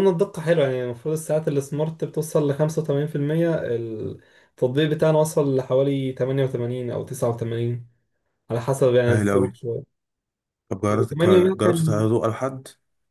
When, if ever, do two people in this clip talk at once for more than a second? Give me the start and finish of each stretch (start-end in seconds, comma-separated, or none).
10.9-12.1